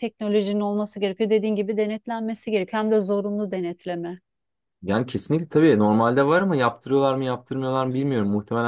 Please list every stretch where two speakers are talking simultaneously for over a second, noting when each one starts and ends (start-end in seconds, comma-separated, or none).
none